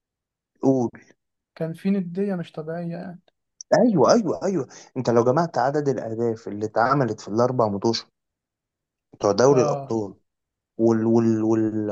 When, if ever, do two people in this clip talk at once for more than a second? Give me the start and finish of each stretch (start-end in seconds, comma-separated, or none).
none